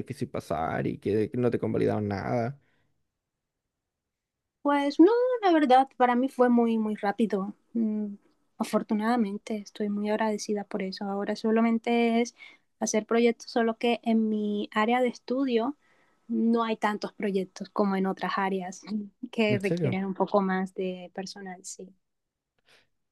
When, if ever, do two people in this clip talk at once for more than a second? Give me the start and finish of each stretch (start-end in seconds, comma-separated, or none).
none